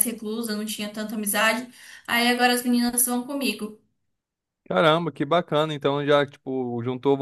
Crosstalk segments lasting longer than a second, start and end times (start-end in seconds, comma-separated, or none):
none